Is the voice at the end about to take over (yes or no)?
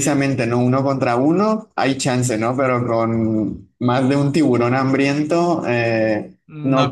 yes